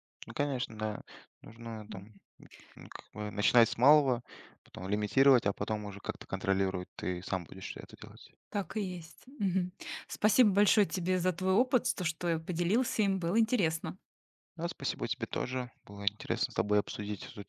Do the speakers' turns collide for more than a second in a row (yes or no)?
no